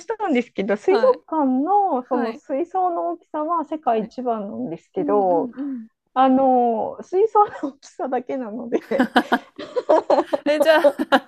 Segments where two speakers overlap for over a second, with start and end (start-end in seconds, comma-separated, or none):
none